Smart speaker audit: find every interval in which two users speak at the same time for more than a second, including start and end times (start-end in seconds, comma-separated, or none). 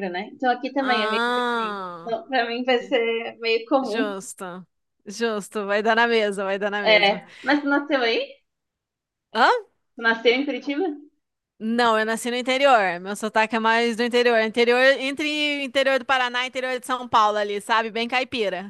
0.8-2.2